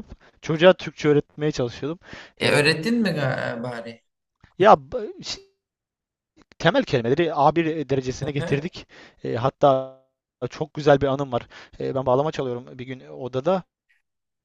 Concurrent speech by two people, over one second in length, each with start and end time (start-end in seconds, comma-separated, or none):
none